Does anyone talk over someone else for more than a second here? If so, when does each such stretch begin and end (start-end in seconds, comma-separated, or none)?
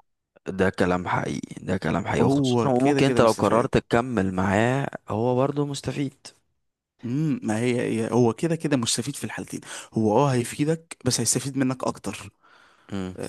2.2-3.7